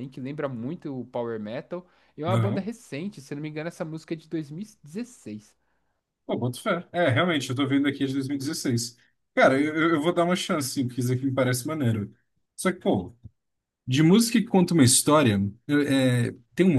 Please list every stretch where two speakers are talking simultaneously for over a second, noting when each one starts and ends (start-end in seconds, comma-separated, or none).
none